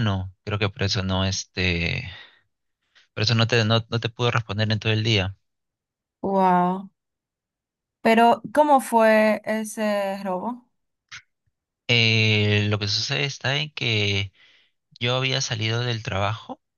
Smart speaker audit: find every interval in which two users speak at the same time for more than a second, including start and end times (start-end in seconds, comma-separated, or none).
none